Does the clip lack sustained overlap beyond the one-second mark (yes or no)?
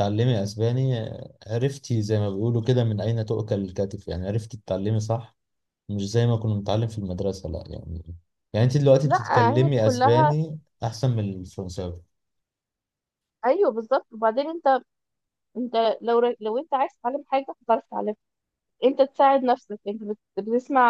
no